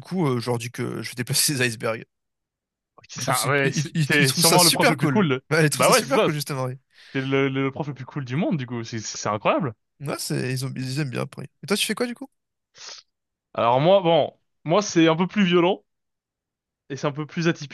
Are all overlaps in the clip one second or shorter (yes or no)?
no